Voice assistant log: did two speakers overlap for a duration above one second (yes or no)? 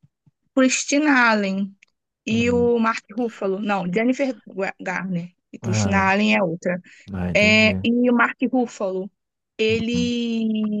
no